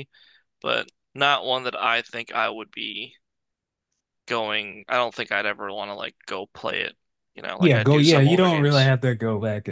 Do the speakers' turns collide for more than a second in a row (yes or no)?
yes